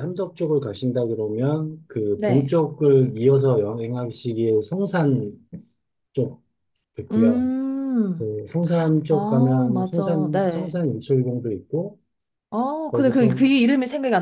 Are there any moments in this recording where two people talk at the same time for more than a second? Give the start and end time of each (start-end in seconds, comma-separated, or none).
9.1-10.7